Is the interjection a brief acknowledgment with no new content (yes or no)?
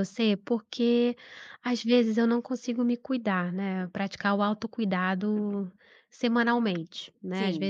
yes